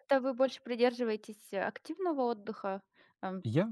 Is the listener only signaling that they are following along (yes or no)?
no